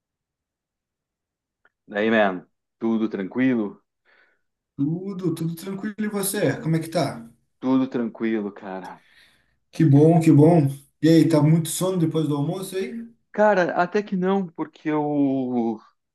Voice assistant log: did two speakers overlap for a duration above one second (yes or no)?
no